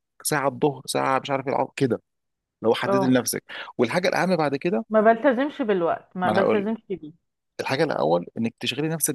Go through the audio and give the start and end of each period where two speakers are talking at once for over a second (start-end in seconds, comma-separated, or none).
none